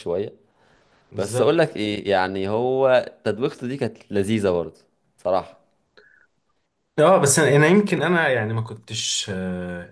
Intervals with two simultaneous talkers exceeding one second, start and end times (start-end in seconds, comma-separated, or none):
none